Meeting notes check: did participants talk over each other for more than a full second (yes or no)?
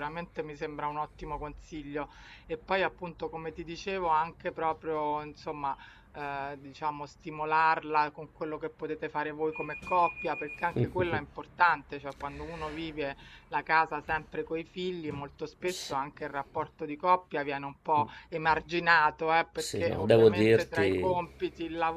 yes